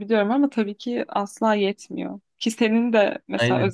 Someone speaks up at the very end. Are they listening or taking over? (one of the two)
listening